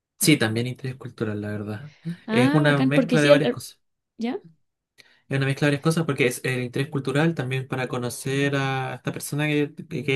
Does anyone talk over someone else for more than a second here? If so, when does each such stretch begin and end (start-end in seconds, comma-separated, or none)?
2.3-3.6